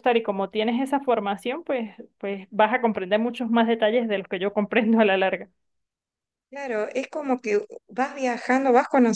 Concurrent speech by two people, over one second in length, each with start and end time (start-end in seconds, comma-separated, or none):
none